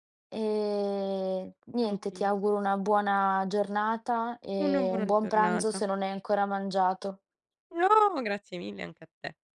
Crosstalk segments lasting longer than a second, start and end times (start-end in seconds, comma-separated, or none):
4.6-5.8